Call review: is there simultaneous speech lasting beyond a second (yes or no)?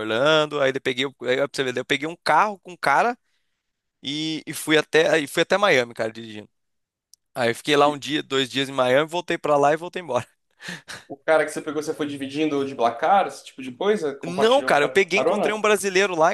yes